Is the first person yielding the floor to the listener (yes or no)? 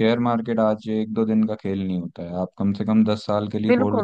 yes